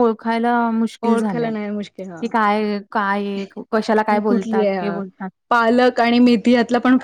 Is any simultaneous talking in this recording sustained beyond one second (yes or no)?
yes